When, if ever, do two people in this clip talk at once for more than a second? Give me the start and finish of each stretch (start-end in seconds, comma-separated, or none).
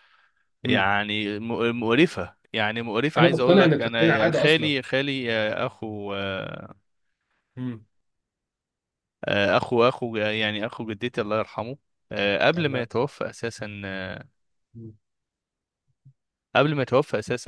3.2-4.7